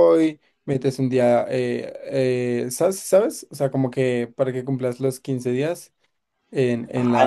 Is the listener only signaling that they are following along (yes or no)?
no